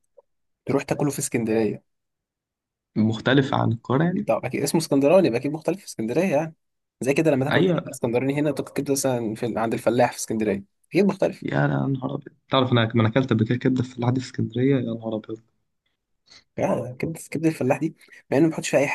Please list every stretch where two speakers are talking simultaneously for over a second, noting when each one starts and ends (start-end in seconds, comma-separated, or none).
none